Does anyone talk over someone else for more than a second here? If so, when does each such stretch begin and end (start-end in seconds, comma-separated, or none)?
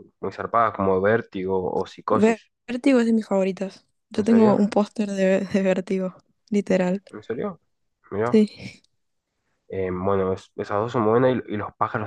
none